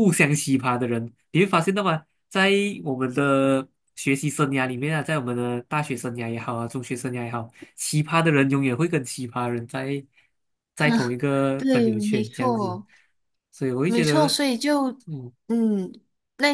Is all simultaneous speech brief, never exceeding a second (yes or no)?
no